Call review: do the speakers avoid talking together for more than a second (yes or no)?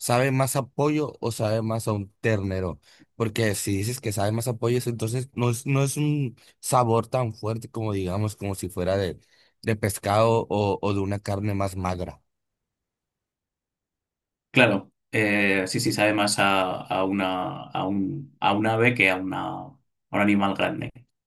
yes